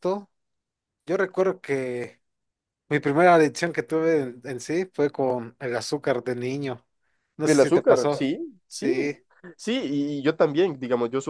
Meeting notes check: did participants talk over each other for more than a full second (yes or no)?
yes